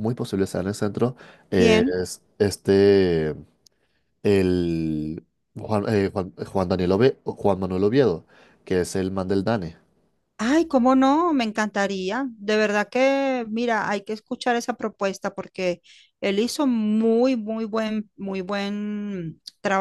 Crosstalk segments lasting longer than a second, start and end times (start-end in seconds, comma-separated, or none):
none